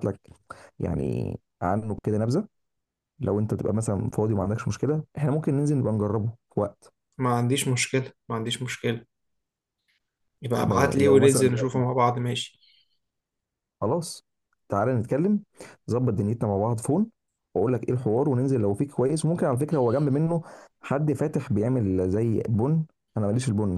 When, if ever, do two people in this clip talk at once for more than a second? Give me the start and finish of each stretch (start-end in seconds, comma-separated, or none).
10.5-11.8